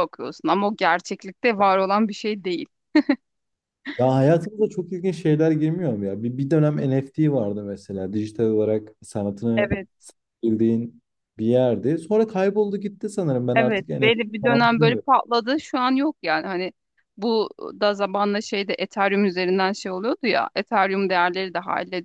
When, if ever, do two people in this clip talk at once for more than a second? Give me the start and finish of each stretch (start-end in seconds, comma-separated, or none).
13.5-15.1